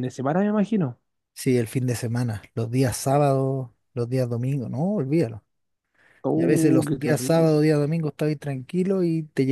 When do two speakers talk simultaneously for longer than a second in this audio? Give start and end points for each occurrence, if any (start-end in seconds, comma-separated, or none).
6.3-7.5